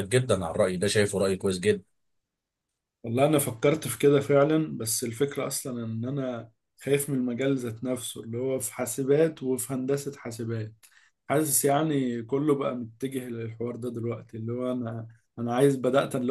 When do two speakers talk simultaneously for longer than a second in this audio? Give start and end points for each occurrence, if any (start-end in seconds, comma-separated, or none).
none